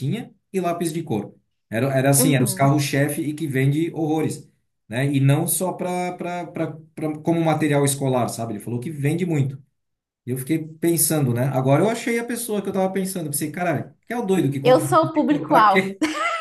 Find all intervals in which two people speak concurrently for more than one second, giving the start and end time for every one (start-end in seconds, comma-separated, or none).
14.6-15.8